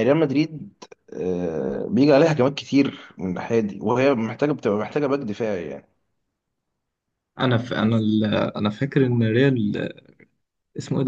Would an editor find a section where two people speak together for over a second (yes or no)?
no